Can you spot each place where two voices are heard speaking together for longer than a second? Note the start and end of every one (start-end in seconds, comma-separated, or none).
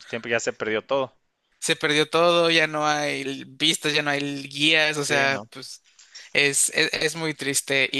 none